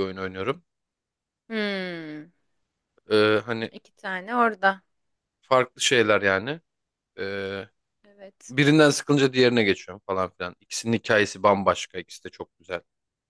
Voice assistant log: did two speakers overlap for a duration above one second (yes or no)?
no